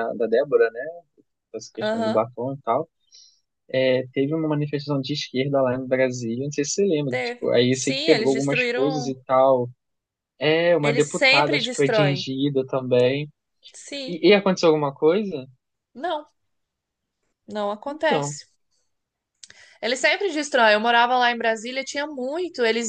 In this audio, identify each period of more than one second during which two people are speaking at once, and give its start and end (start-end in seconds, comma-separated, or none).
7.1-9.2, 10.8-12.3